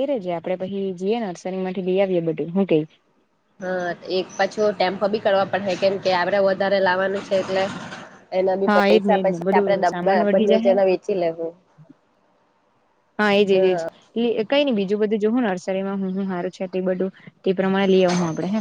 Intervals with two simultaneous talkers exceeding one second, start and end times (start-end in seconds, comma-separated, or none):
8.7-10.7